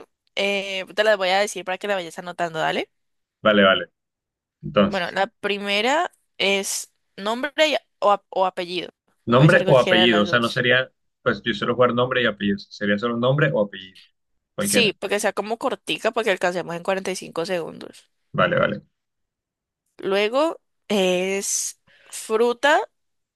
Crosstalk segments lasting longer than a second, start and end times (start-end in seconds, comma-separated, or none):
9.3-10.7